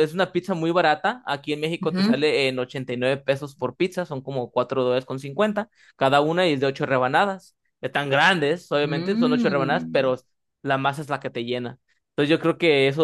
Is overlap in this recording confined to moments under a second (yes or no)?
no